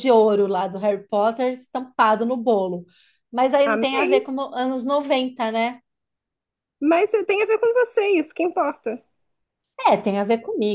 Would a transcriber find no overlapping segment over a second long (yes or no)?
yes